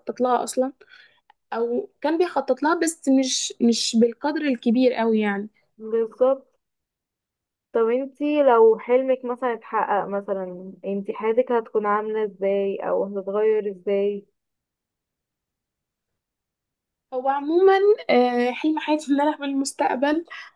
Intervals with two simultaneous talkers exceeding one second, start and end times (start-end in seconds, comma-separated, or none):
none